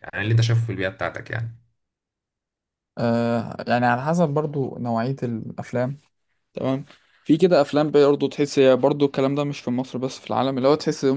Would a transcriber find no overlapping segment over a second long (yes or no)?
yes